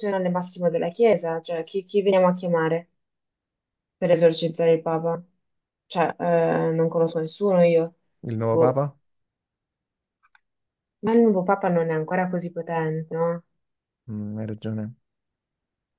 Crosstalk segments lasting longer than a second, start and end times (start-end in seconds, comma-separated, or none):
none